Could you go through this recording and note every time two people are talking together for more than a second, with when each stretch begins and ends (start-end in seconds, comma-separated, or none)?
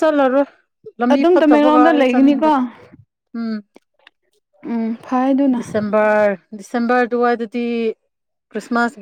1.1-2.5